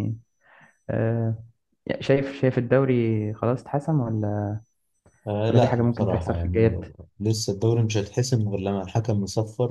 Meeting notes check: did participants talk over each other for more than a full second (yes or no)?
yes